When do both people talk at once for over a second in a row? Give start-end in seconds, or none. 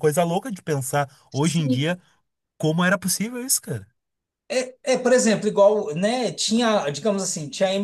none